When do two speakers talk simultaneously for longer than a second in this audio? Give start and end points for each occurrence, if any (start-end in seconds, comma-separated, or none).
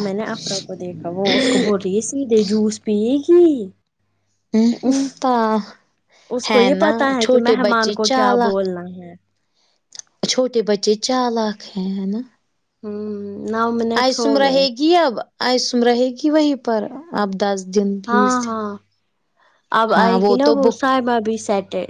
6.5-8.7